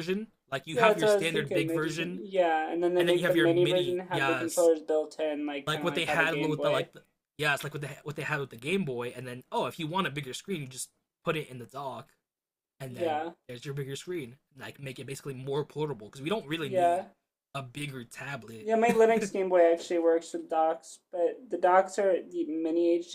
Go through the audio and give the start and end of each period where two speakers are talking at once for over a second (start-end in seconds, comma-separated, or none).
0.7-2.2, 3.0-4.7, 5.7-6.9